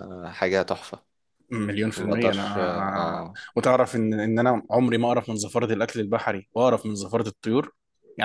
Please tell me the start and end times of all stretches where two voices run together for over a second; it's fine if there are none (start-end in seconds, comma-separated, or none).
2.0-3.4